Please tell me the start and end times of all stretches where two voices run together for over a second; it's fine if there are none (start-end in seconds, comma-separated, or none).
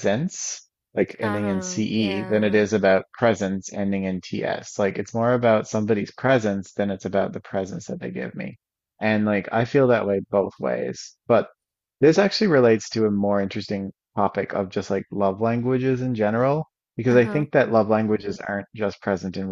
1.2-2.6